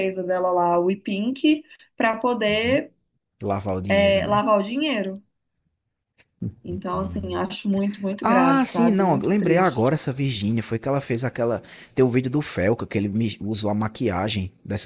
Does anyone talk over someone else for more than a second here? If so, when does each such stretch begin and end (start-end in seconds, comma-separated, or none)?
8.2-10.0